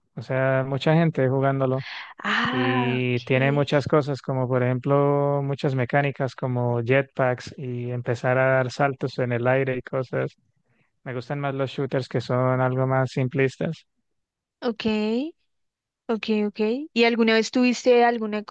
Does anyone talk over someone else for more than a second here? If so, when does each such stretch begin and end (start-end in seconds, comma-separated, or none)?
2.5-3.9